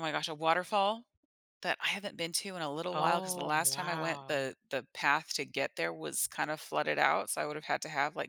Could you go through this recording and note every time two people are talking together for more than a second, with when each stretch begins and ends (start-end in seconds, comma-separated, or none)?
2.9-4.5